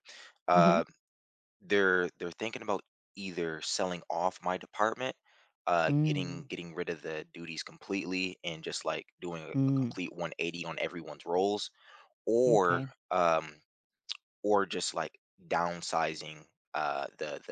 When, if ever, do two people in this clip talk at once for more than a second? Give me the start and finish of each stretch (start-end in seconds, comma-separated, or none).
none